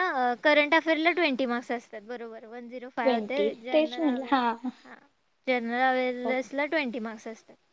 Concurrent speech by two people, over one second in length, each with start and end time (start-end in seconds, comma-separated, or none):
3.0-4.7